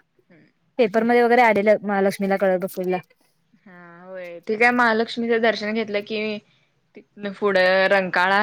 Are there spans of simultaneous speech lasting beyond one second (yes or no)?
no